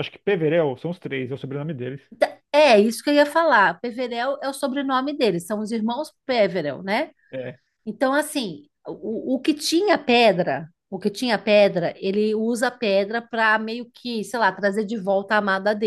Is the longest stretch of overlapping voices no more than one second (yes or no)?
yes